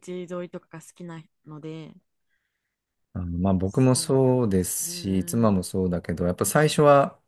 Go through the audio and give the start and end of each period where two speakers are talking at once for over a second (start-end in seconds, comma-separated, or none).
3.6-5.6